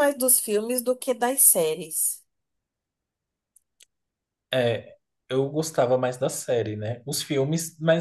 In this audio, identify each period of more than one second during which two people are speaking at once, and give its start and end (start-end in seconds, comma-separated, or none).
none